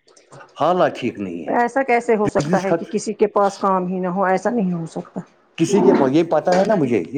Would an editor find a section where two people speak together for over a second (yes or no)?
no